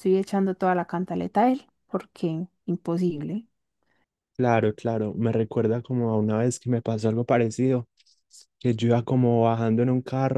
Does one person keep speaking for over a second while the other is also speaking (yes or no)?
no